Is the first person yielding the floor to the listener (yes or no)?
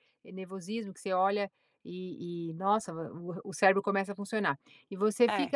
no